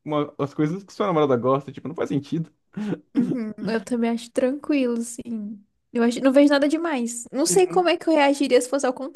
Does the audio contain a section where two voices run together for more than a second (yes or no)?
no